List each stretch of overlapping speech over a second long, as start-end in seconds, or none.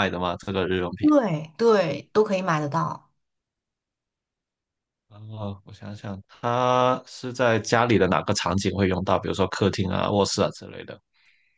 none